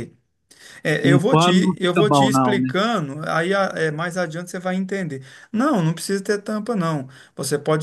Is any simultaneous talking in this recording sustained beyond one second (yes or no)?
yes